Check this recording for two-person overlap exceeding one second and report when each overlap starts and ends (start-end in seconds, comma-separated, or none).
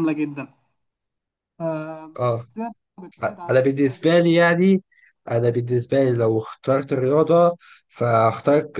none